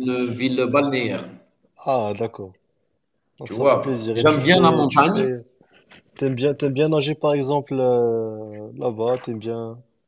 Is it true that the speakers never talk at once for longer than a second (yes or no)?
no